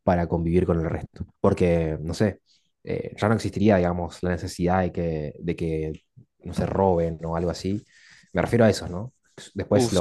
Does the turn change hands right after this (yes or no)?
yes